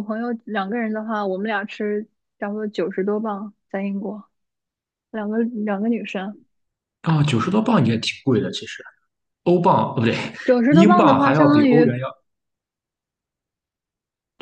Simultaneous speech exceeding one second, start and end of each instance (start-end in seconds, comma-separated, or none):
10.7-12.0